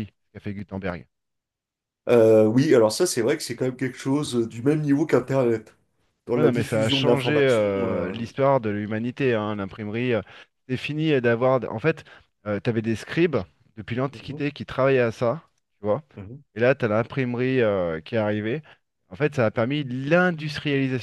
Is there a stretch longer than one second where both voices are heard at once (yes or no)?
yes